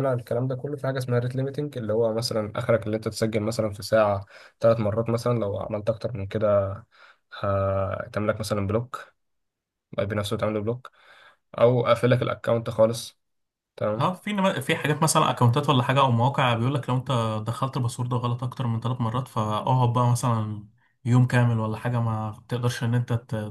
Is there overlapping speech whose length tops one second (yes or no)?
no